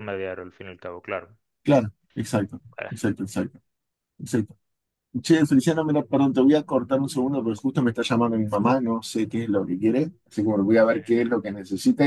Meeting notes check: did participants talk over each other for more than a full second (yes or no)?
no